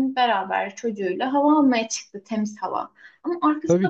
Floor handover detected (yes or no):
no